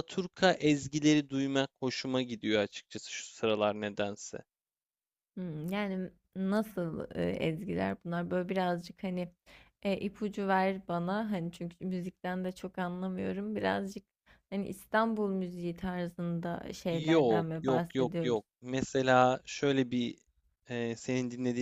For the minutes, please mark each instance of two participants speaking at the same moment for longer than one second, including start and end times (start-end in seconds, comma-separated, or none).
16.9-18.4